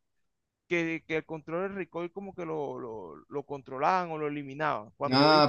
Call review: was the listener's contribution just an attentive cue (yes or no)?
no